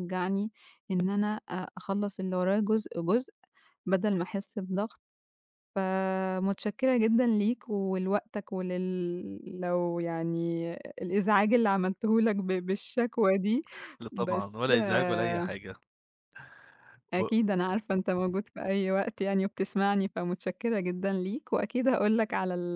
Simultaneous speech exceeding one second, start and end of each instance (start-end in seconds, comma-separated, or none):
14.1-15.5